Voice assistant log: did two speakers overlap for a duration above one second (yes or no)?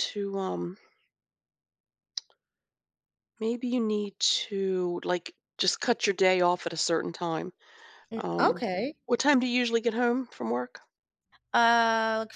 no